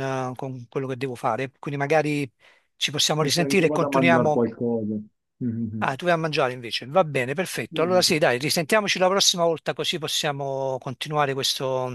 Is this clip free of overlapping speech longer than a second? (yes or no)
no